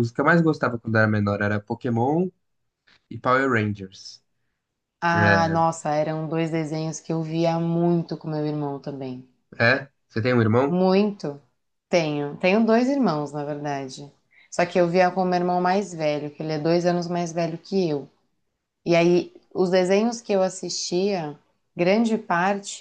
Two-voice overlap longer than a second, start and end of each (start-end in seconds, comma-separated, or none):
none